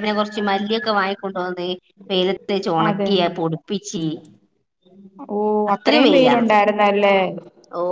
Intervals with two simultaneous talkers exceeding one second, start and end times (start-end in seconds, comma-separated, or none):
none